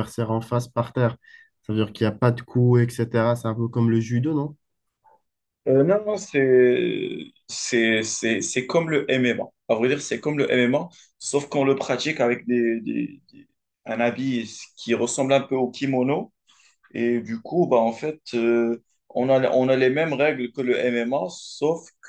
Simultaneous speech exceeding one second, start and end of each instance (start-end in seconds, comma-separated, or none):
none